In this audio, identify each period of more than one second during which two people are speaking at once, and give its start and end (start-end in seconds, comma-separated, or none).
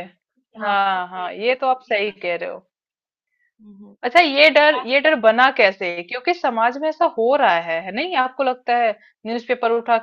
0.6-2.6